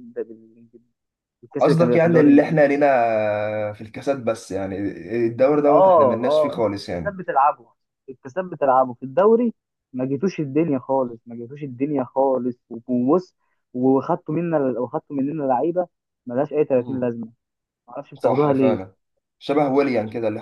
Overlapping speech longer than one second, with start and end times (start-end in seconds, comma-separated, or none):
1.6-2.9, 5.7-7.2